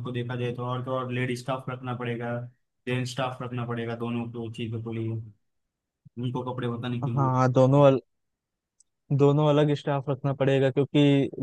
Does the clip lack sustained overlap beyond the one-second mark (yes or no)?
yes